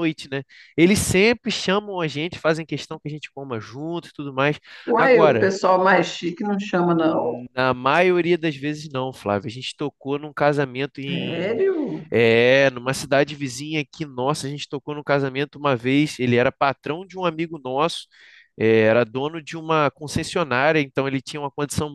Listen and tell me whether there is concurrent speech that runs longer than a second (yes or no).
no